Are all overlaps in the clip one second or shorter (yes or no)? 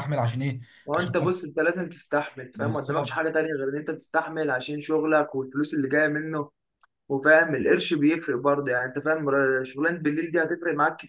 yes